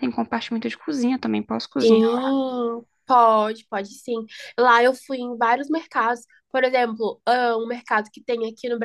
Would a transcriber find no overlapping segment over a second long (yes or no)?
yes